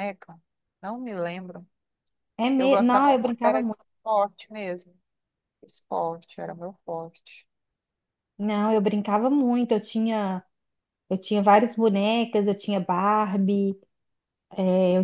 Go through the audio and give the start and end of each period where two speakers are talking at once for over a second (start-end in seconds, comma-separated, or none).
2.6-3.8